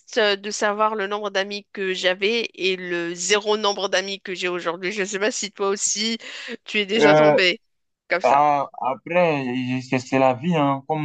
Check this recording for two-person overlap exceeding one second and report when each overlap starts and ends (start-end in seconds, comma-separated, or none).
none